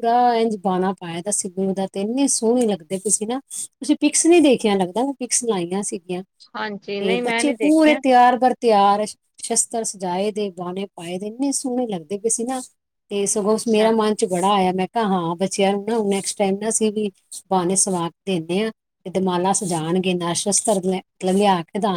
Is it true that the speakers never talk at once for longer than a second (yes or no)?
no